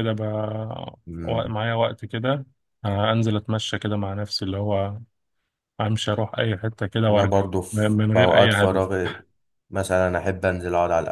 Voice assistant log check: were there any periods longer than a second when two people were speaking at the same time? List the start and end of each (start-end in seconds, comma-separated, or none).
7.1-8.9